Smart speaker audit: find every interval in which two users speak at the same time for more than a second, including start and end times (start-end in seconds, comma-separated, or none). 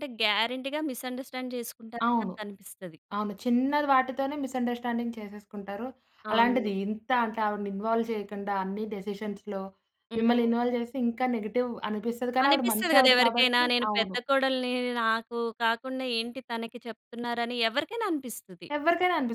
12.5-14.2